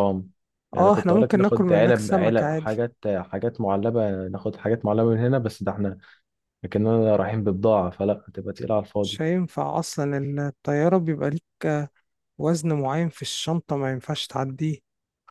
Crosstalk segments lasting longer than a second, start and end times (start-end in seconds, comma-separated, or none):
0.8-2.8